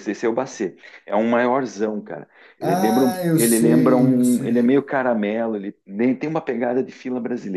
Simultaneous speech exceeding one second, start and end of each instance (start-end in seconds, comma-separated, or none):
2.6-4.7